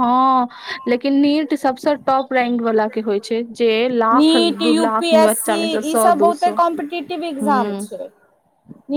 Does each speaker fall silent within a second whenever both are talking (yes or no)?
no